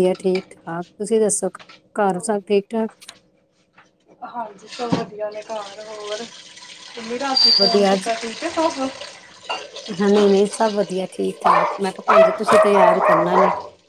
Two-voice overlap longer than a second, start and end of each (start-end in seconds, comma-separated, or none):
none